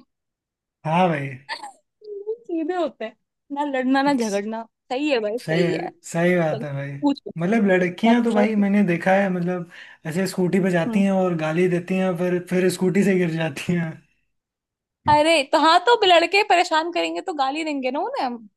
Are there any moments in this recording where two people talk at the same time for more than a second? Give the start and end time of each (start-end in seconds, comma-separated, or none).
7.4-8.6